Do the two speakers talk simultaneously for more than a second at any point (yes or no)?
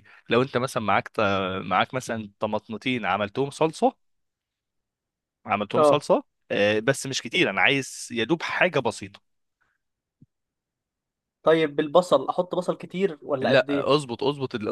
no